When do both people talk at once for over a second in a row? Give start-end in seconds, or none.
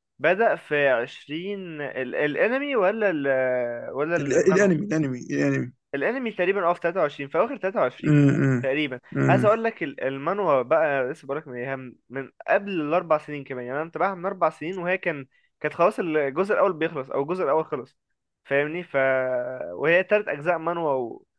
none